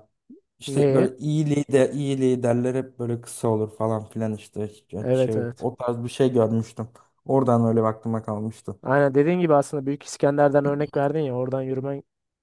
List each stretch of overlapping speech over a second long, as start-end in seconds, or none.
none